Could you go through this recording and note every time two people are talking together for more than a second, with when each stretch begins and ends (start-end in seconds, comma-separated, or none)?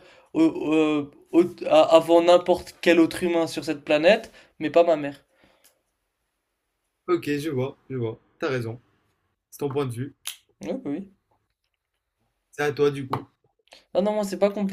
none